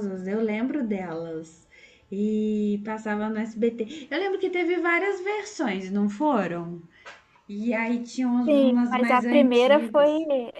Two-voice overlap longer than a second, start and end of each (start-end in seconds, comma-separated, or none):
8.5-10.1